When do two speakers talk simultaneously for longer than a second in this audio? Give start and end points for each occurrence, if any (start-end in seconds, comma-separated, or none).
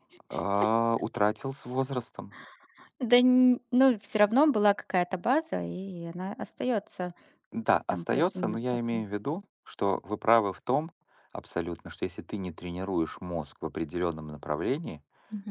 7.9-9.1